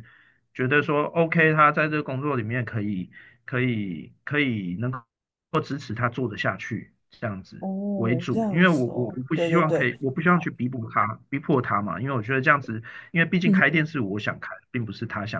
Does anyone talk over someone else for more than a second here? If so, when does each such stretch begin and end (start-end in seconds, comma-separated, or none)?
7.6-9.9